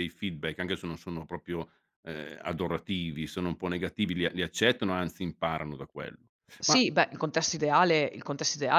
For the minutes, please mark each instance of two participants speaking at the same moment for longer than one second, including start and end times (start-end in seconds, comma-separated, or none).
none